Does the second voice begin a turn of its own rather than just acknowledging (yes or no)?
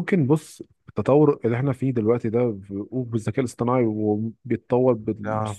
no